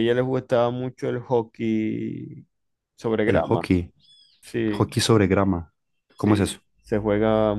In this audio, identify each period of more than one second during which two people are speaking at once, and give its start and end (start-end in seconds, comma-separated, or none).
none